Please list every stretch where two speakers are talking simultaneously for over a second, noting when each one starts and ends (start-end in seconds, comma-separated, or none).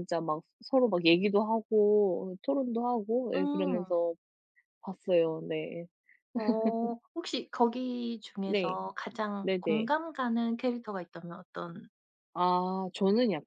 none